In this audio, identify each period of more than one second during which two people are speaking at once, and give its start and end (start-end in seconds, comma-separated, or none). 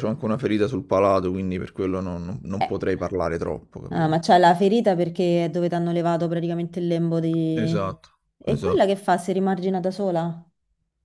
none